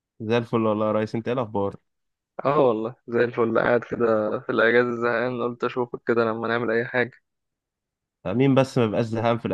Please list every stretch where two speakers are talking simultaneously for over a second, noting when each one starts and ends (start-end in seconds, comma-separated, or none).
none